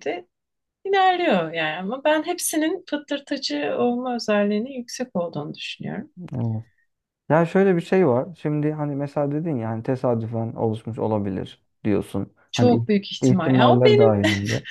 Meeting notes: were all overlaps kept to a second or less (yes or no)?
no